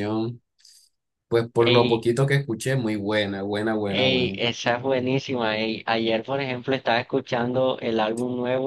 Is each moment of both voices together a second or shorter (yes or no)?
yes